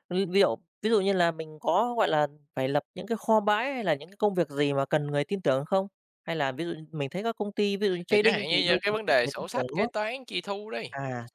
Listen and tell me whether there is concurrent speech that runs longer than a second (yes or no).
yes